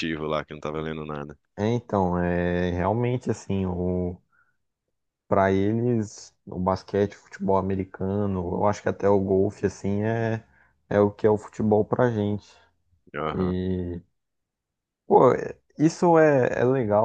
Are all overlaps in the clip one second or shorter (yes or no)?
yes